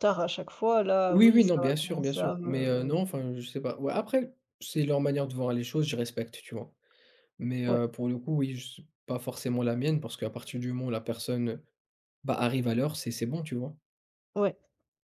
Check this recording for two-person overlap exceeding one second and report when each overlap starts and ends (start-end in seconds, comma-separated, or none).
1.1-3.0